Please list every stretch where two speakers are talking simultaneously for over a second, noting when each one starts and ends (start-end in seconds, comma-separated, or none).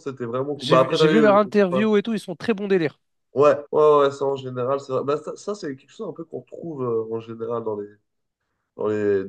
0.6-1.9